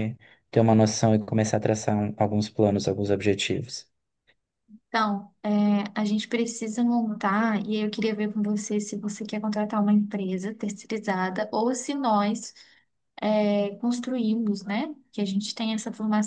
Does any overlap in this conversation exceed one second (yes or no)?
no